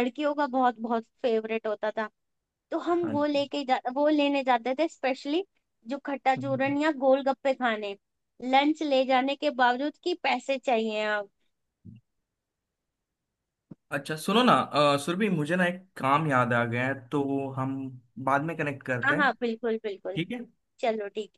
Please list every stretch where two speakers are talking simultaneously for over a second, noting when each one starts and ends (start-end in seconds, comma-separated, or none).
none